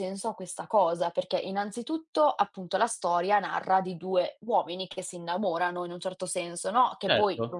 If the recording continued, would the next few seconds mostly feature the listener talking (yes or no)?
no